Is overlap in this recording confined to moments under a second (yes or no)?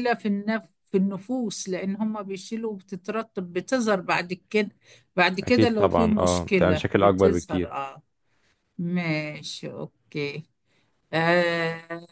no